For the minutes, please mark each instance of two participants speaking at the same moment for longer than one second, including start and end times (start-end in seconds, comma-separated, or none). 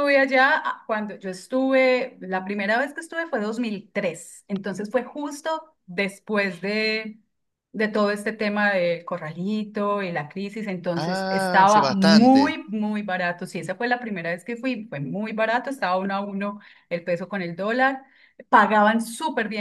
10.9-12.6